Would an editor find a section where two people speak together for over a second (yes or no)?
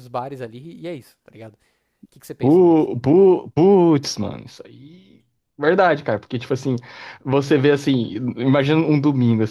no